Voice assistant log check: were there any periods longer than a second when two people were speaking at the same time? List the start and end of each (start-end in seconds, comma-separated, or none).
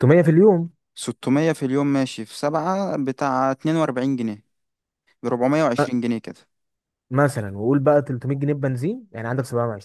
none